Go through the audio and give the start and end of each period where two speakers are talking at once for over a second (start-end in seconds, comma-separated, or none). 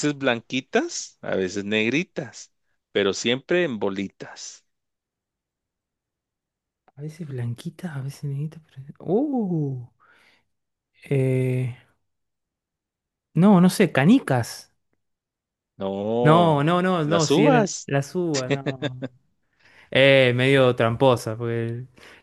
16.2-17.9